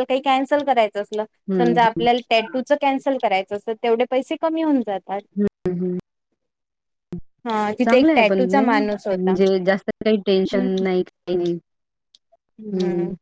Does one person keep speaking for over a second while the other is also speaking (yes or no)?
yes